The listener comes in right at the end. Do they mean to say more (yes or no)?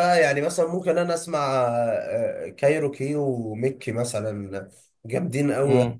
yes